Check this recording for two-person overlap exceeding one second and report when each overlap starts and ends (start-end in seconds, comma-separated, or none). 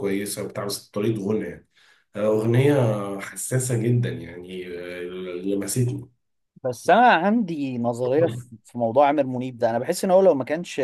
none